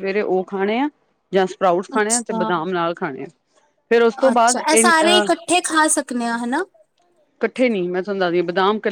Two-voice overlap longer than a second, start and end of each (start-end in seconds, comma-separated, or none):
none